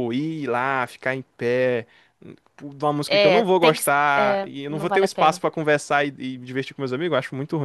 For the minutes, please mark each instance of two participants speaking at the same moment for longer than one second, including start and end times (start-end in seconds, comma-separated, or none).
3.1-5.4